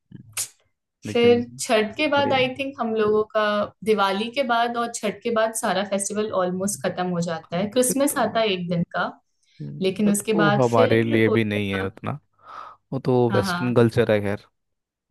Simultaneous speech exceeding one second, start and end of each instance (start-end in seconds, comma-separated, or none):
10.0-11.9